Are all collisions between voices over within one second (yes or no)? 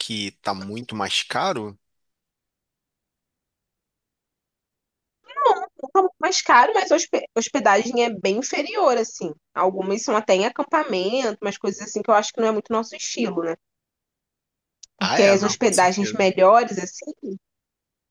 no